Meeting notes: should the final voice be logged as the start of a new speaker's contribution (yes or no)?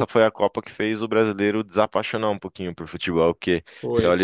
no